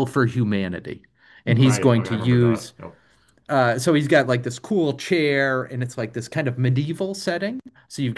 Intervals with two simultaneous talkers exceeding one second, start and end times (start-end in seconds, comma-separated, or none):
1.4-2.7